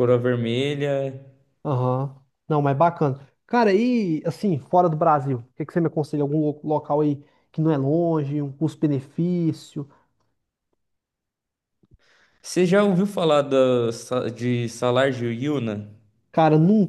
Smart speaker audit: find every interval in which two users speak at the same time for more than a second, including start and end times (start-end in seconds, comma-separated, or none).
none